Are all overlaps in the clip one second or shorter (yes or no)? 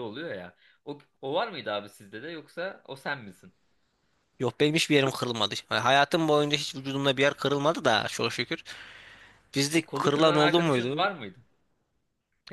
no